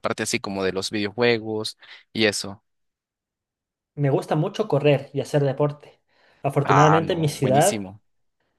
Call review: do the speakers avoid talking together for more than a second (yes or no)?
no